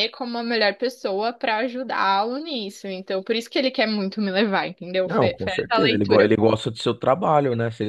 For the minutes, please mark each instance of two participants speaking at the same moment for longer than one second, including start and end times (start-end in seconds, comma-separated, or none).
5.0-6.3